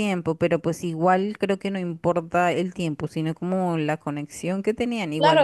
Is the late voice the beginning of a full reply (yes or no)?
yes